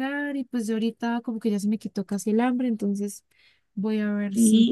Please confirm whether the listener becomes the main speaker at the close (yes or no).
yes